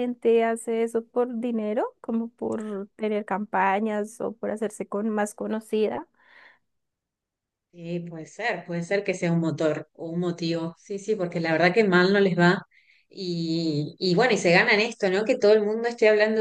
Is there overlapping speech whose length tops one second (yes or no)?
no